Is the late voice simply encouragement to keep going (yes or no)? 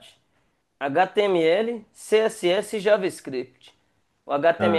yes